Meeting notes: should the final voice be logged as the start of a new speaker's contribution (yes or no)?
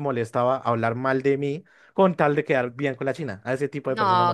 yes